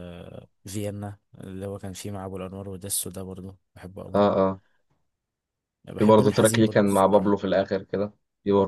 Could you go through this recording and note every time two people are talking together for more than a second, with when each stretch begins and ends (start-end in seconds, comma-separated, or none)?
6.0-7.4